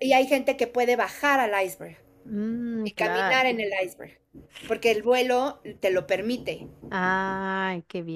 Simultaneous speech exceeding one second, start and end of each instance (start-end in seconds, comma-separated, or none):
none